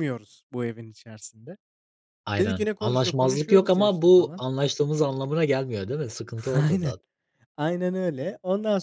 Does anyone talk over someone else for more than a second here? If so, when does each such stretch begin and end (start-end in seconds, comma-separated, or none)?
2.4-4.4